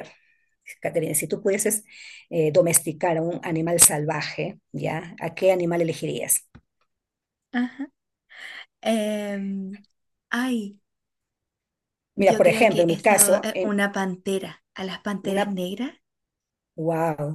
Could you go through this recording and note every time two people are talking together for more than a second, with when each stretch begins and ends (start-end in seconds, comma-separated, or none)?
12.2-13.8